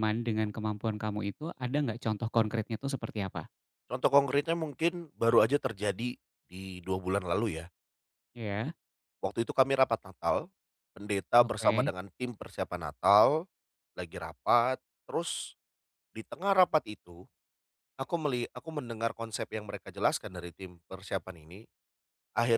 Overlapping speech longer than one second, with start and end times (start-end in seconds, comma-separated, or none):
none